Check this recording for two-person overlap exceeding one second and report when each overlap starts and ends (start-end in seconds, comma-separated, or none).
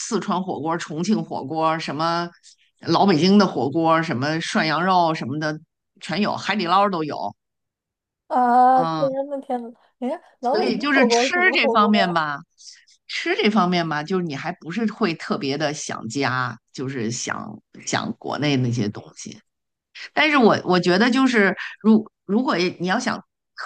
10.4-12.1